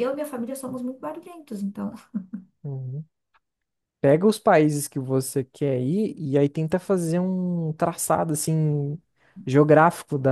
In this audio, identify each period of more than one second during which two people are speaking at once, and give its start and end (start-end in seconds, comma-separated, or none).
none